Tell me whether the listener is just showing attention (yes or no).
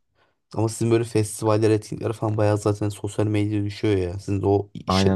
no